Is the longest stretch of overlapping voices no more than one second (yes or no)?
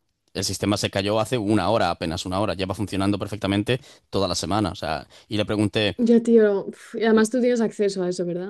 yes